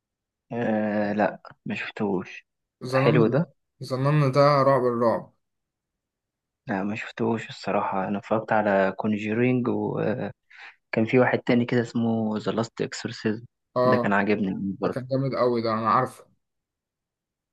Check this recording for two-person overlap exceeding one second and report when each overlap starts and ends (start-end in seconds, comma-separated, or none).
none